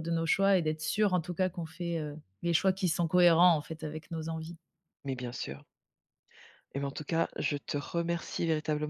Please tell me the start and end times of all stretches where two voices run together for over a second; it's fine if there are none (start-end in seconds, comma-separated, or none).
none